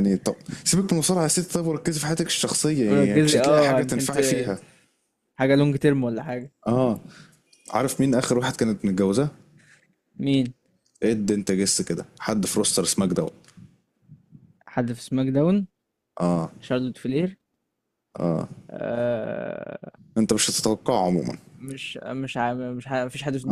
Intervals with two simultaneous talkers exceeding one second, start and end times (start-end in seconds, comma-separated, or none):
2.9-4.2